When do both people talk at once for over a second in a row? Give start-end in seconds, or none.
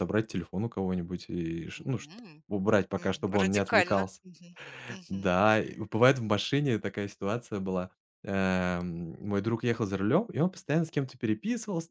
3.0-4.2